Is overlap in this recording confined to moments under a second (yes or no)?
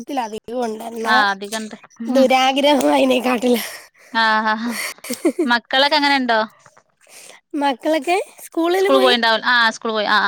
yes